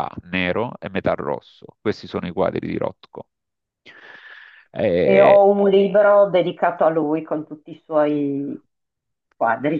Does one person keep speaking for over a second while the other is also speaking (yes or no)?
no